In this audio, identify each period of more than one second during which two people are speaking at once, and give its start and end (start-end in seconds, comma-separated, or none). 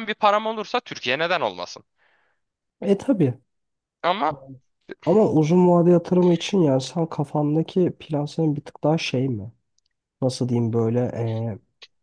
none